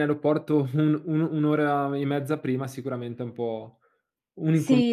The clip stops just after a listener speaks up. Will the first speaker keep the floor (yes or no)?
no